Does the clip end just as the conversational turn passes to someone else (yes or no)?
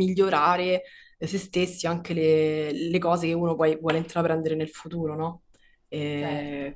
no